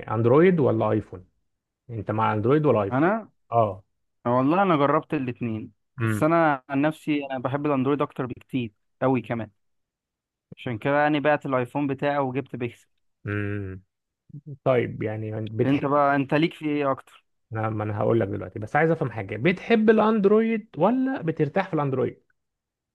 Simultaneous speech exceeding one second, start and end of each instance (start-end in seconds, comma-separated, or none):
none